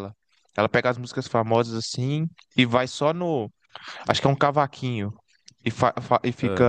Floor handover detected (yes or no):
no